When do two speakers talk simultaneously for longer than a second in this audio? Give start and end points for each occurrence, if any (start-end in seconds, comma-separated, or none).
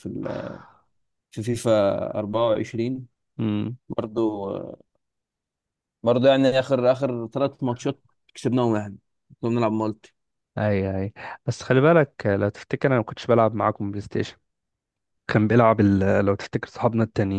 none